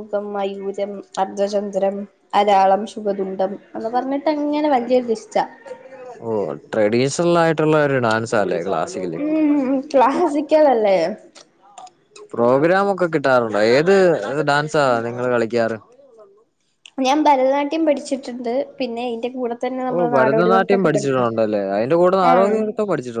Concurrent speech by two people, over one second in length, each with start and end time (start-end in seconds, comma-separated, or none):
19.9-21.3